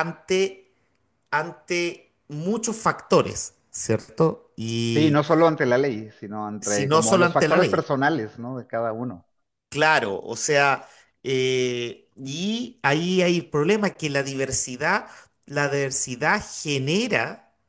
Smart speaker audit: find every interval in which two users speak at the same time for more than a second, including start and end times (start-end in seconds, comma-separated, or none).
6.6-7.8